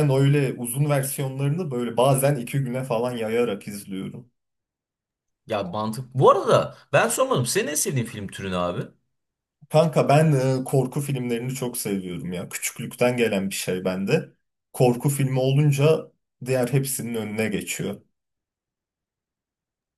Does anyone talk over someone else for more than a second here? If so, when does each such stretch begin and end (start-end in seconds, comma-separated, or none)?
none